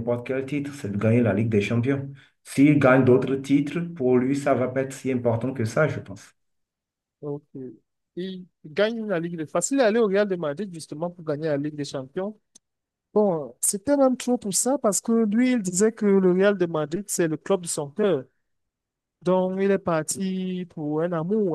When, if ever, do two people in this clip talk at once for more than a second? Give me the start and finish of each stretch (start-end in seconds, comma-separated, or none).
none